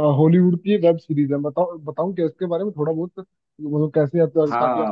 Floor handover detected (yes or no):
yes